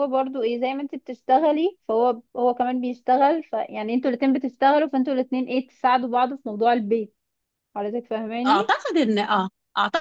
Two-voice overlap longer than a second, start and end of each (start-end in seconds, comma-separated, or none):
none